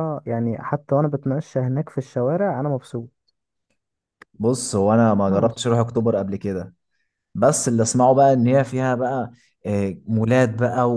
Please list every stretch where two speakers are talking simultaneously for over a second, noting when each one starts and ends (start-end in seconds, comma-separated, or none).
none